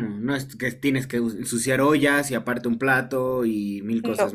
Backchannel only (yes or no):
no